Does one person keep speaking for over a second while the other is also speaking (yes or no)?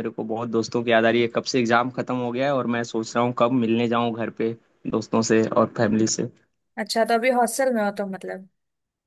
no